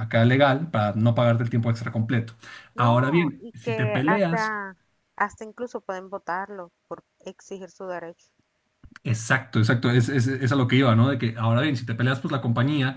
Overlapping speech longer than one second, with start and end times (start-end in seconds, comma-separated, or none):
2.8-4.5